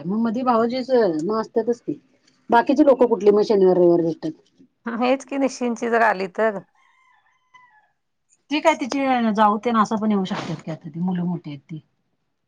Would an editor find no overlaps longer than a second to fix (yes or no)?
yes